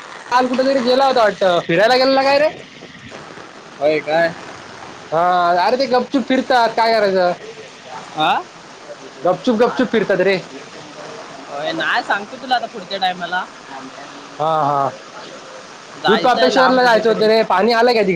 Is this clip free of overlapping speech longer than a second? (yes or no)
no